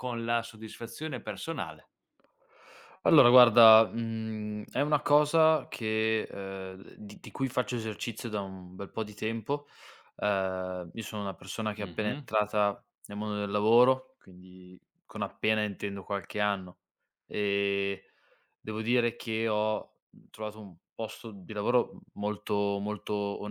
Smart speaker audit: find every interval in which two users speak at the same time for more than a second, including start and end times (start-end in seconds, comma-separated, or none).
none